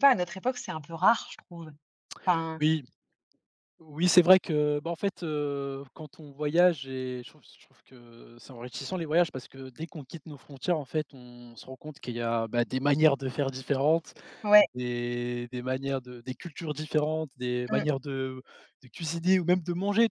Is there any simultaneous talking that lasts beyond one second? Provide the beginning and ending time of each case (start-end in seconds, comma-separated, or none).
none